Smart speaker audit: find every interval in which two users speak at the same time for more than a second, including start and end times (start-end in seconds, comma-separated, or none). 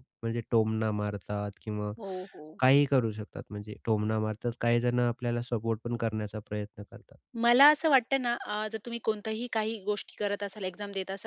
none